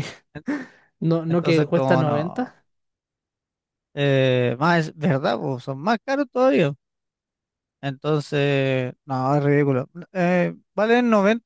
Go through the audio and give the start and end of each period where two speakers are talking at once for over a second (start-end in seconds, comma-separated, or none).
1.3-2.6